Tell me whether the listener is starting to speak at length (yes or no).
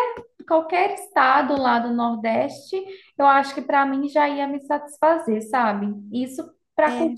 no